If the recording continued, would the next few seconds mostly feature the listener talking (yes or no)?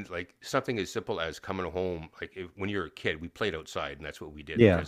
no